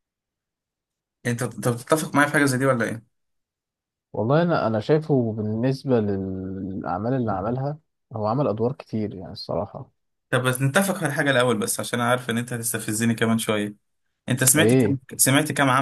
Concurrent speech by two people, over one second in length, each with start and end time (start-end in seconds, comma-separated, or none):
none